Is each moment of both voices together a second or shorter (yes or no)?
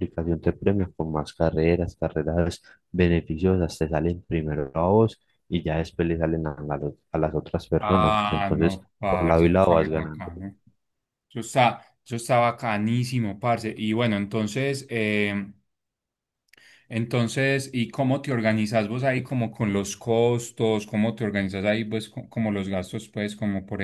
no